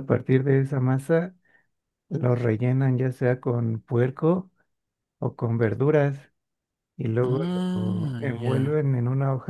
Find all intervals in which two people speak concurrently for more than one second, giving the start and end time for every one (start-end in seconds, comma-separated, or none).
7.2-8.7